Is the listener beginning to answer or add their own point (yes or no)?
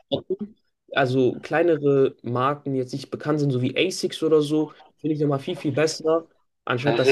yes